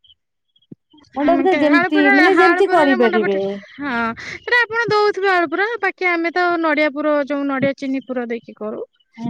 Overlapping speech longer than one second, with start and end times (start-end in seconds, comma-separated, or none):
1.3-3.4